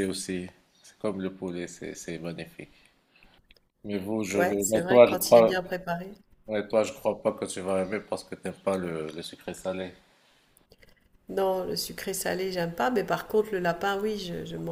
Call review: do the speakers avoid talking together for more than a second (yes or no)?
no